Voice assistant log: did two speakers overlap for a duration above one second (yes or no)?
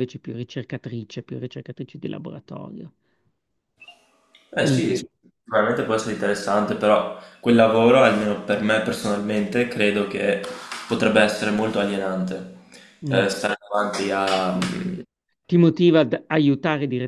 no